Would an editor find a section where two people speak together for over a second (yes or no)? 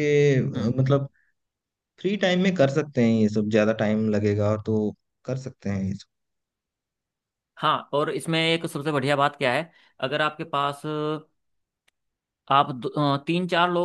no